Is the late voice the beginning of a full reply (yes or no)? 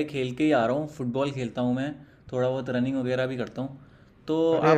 no